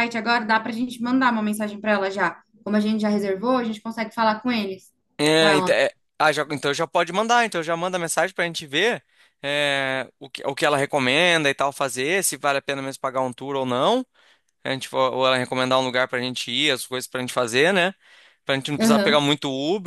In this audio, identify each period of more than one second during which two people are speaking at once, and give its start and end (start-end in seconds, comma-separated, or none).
none